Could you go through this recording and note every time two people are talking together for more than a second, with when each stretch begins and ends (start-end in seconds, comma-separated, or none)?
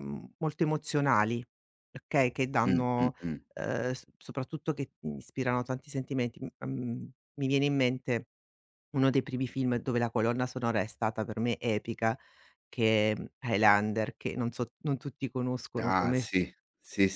none